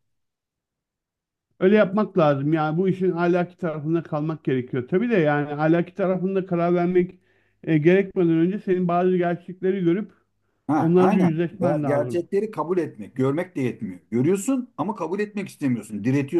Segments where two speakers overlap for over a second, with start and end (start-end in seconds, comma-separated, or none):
10.8-12.2